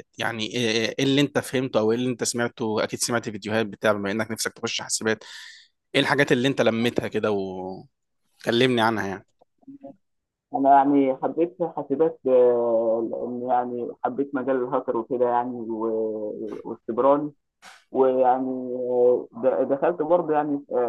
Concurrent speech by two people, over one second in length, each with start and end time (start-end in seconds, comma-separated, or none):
none